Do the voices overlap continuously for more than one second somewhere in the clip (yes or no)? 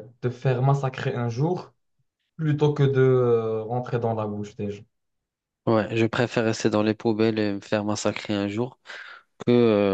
no